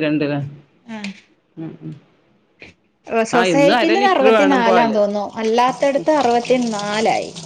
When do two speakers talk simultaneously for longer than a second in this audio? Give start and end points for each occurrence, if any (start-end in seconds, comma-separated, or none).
3.4-5.0